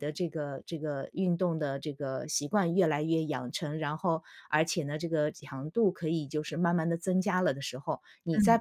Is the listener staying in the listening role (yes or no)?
no